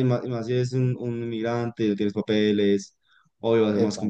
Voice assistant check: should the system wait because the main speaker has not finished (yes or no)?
yes